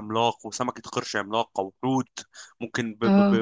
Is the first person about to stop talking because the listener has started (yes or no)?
no